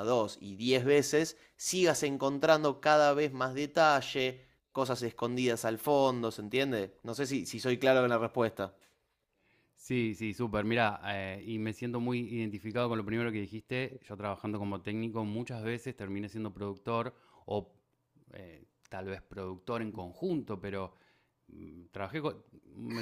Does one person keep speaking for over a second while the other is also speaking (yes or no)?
no